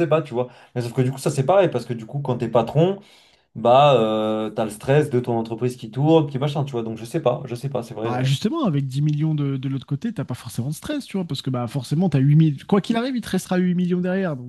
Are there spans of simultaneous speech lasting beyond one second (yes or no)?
no